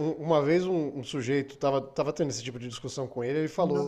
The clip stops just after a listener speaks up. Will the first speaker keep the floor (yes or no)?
yes